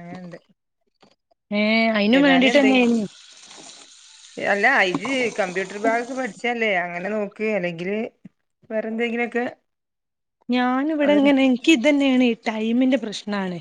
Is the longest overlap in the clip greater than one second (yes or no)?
no